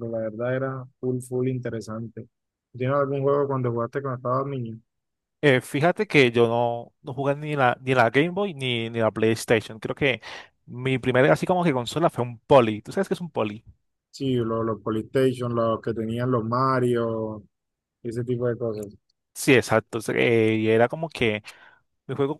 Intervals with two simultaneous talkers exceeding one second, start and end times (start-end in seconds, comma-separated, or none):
none